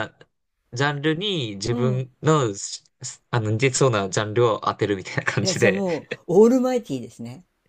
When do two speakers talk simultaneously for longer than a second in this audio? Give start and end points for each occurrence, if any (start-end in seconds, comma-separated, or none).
none